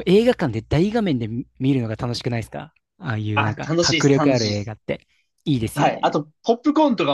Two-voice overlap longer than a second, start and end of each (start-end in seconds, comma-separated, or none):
3.3-4.7